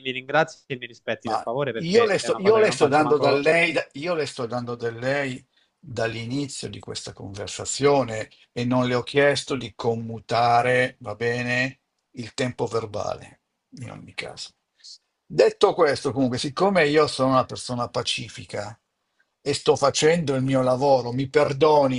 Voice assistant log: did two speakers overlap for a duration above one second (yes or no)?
yes